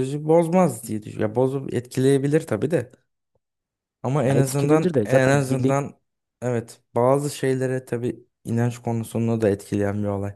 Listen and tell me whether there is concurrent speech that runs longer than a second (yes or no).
yes